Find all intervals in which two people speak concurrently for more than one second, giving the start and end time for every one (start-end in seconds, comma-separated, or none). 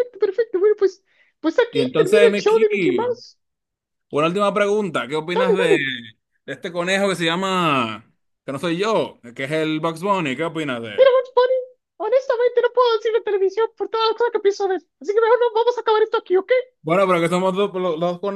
1.7-3.2